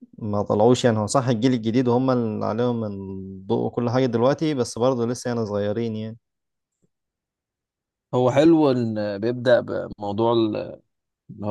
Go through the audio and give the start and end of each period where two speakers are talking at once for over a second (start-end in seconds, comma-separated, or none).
none